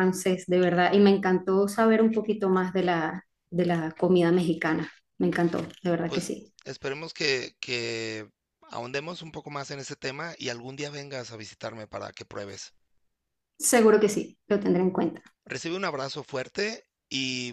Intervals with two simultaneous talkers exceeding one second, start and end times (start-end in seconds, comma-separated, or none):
none